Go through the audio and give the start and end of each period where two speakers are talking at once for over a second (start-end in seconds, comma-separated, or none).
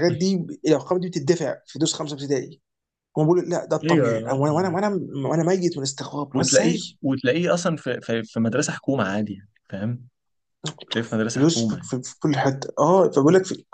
none